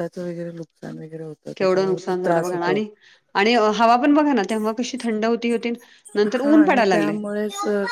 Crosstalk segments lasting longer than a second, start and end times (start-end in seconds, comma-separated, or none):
1.6-2.8